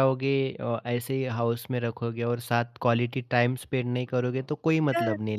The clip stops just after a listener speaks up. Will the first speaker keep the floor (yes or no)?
no